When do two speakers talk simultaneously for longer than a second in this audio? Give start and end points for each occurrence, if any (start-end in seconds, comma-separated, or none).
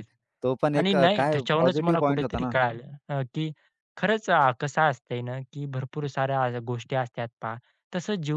0.8-2.5